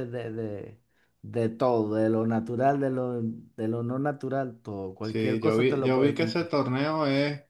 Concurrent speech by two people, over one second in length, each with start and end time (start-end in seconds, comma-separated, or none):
5.0-6.5